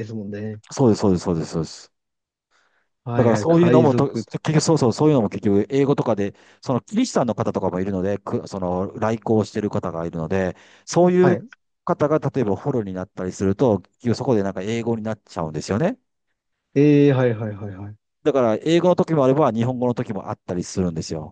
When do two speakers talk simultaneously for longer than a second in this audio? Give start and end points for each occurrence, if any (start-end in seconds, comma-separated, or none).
3.1-4.5